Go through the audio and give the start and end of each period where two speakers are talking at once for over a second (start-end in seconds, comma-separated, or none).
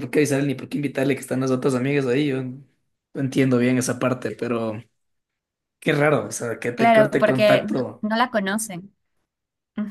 6.7-8.0